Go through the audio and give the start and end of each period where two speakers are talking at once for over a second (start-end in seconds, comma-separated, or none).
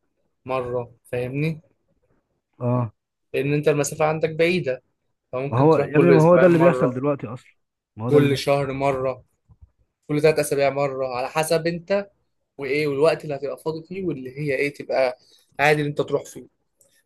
5.5-7.0